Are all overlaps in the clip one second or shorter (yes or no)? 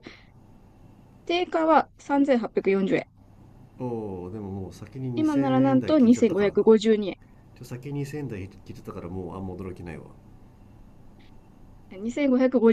no